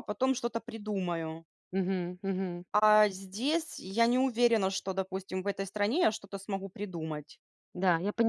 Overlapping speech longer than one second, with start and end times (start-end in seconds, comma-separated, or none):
none